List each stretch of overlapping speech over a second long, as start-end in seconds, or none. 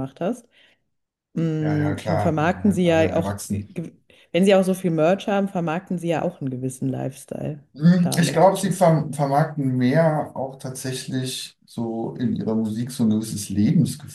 1.6-3.7